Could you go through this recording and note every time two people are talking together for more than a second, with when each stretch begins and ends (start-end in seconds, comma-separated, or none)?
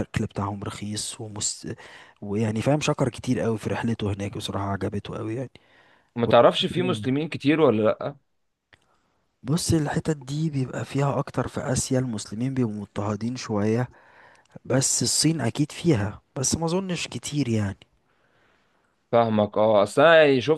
none